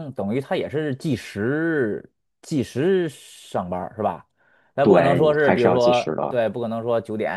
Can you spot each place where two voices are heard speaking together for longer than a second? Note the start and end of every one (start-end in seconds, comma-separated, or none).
4.8-6.4